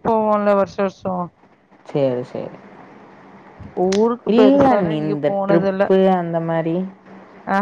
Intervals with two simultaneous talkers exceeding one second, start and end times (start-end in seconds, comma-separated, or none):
4.4-5.9